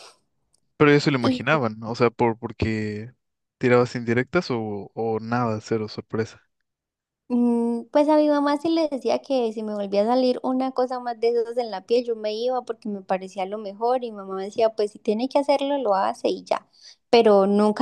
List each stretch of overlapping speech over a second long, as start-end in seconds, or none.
none